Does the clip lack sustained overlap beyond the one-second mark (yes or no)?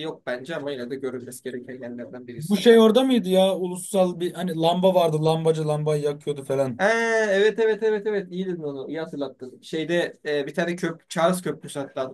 yes